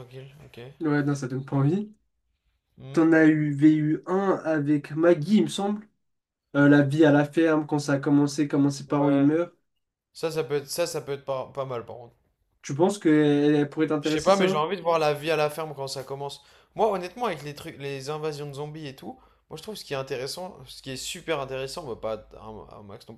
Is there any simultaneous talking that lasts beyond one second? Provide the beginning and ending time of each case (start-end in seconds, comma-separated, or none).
none